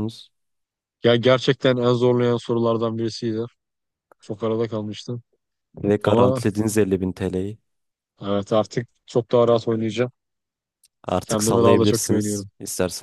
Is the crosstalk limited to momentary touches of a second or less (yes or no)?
no